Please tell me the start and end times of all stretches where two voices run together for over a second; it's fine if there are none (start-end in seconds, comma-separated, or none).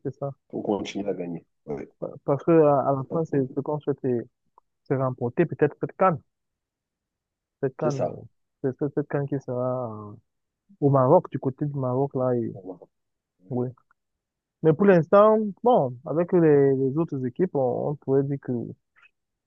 none